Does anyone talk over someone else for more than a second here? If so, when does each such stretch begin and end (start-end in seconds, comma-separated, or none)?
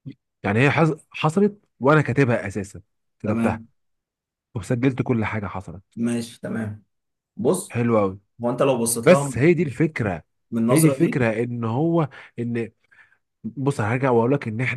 none